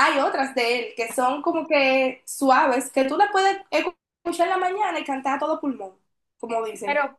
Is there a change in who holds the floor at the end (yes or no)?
no